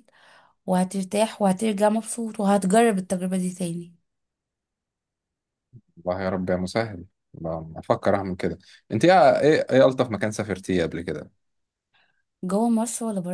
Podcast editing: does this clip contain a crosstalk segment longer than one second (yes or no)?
no